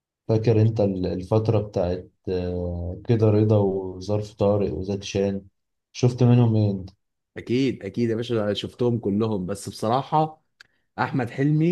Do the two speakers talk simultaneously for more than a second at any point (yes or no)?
no